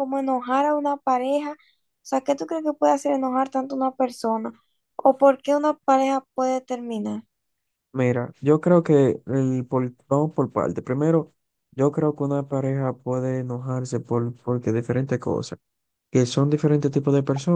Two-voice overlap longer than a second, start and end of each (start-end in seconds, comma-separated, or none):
none